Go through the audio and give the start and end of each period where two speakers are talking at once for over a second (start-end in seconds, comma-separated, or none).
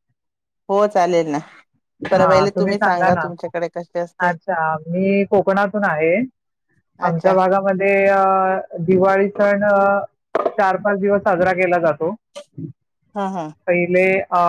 none